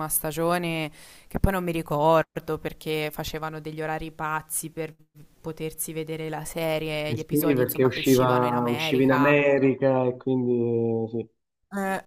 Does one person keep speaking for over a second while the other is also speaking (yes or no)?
yes